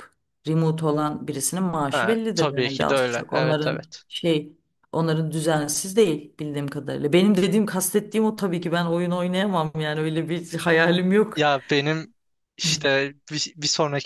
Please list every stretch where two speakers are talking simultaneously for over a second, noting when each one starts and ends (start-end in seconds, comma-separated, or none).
1.9-4.0